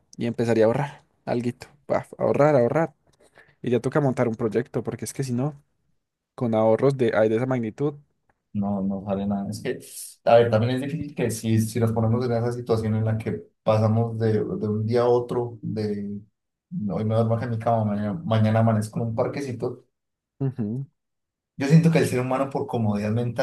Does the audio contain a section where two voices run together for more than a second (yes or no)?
no